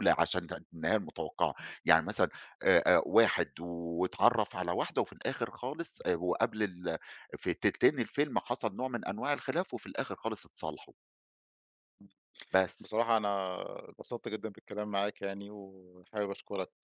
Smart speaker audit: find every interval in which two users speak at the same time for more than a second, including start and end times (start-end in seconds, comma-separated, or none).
none